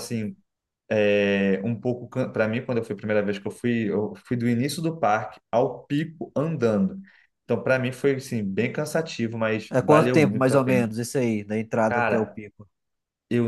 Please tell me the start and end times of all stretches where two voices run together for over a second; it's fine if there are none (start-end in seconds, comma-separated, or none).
9.7-10.9